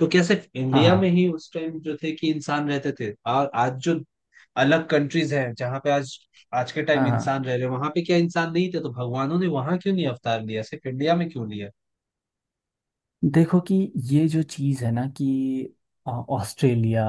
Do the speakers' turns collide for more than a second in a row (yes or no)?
no